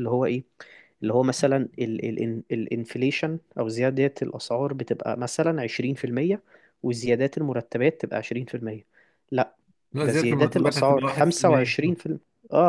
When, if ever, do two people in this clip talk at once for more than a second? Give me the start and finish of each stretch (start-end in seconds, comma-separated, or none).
10.0-11.8